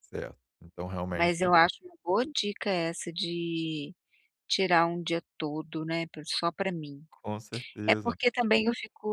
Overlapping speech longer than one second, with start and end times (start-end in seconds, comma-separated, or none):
none